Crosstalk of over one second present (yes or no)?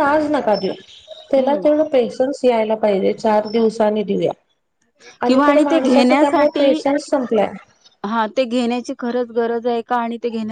yes